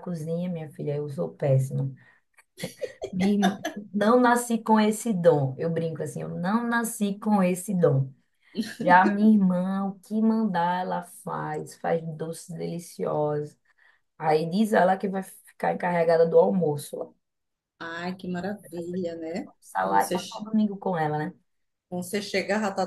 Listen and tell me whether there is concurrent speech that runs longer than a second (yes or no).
yes